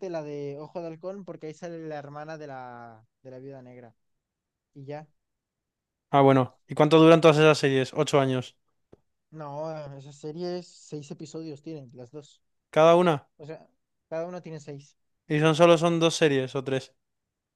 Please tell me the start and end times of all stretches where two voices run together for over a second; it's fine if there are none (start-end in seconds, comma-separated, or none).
none